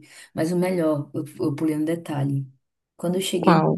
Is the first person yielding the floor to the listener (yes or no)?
no